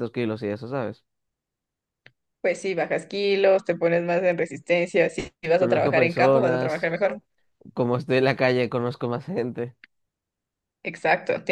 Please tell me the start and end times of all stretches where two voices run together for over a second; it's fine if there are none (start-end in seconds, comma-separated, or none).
5.5-7.0